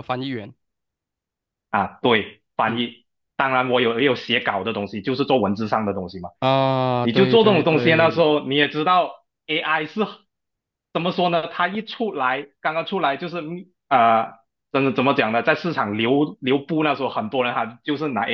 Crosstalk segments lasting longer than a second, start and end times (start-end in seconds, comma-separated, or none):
7.0-8.3